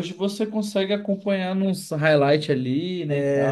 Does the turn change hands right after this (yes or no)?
yes